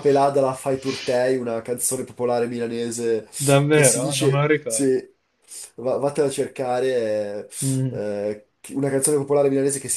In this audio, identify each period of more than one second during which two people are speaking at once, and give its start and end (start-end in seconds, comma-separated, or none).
3.7-4.9